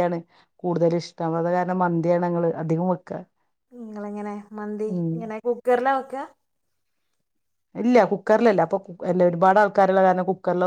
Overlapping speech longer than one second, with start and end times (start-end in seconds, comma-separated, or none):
none